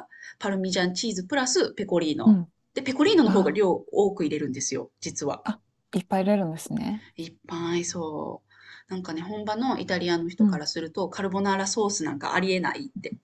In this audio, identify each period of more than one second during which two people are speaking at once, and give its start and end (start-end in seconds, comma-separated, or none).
none